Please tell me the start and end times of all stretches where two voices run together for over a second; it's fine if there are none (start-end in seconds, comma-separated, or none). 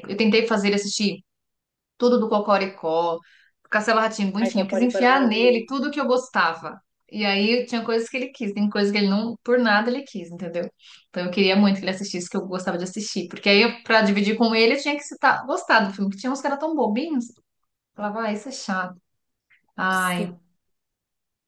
4.4-5.7